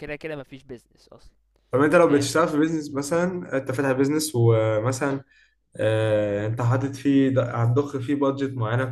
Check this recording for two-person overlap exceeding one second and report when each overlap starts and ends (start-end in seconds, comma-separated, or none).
none